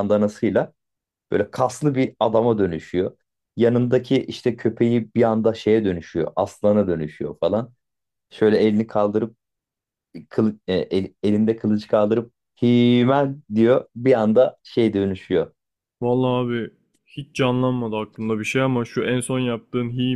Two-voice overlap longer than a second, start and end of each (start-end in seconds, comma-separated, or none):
none